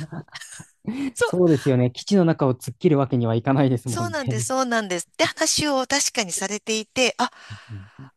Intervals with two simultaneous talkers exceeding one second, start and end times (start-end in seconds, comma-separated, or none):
none